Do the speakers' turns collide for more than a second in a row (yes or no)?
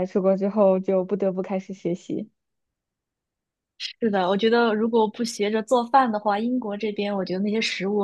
no